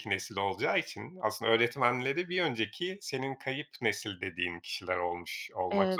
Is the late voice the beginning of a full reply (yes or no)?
yes